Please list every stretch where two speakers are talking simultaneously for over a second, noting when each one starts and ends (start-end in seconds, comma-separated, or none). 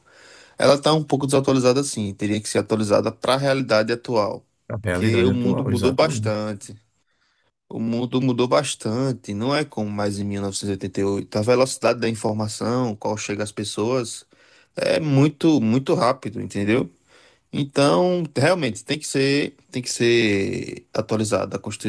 4.8-6.4